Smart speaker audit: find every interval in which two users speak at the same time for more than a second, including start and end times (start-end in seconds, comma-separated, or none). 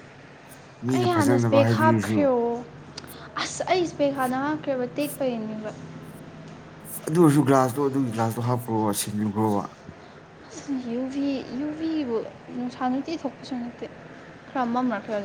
0.9-2.3